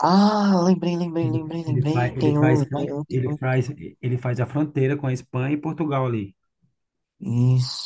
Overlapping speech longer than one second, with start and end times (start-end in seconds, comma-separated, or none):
1.2-3.4